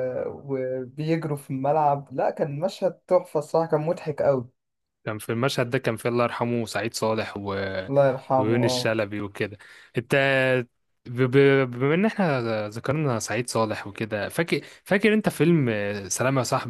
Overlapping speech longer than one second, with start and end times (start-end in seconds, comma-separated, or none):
none